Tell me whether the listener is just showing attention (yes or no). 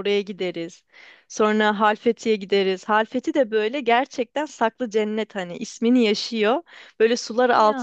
yes